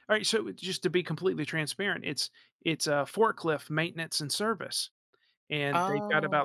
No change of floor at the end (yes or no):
yes